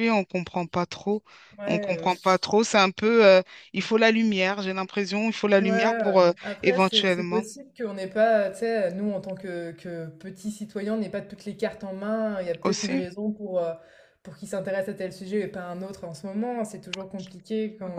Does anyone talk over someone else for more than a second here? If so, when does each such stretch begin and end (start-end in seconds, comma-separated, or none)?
5.6-7.4